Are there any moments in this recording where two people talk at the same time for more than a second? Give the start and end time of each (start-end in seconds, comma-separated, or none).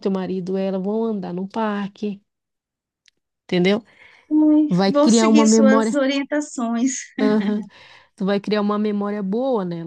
4.7-6.0